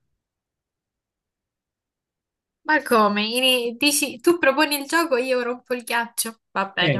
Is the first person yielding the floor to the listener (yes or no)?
yes